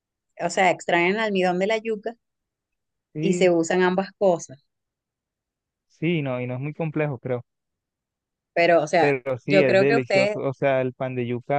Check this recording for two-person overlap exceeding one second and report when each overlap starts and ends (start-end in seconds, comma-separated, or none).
9.0-10.4